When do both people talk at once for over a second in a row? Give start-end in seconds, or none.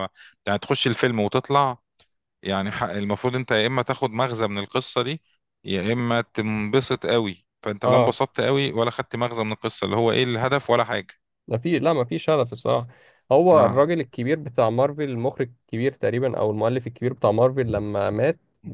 none